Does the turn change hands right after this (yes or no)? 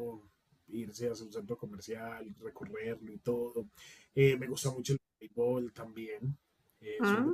no